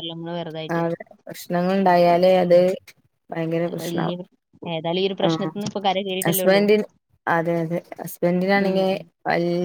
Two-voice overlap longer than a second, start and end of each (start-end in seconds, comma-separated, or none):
none